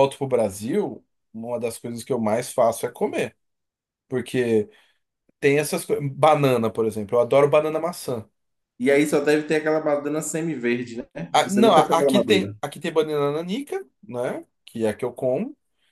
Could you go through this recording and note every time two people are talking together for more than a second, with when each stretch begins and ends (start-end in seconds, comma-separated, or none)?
11.3-12.6